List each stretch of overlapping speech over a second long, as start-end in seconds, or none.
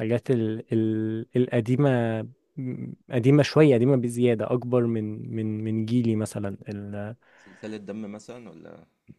none